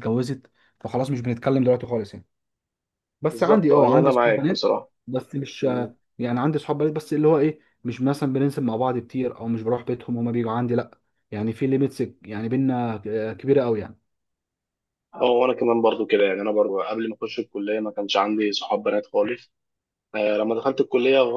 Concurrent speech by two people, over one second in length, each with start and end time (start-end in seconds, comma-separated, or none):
3.3-4.7